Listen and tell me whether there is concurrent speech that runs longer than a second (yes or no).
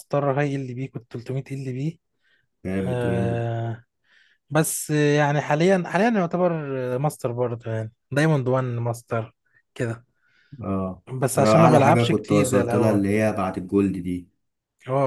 yes